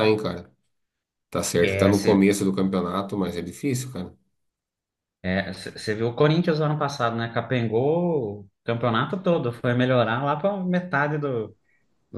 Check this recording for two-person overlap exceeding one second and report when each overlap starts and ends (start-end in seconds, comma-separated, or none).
none